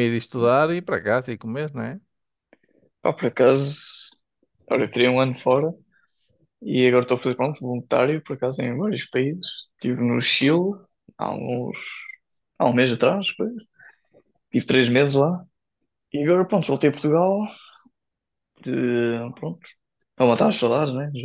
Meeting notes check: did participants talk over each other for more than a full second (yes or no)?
no